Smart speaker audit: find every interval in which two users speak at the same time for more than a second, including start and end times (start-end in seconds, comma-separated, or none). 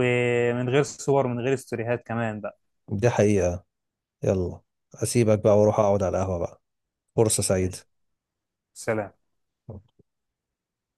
none